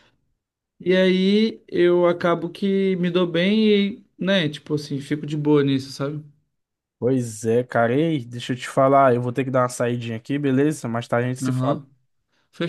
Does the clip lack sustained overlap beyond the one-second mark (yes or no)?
yes